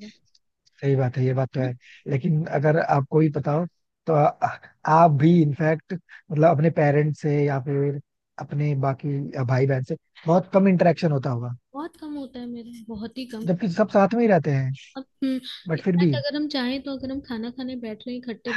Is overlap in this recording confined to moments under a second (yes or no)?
yes